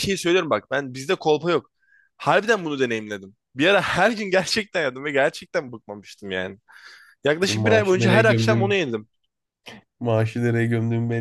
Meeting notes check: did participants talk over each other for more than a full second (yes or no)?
yes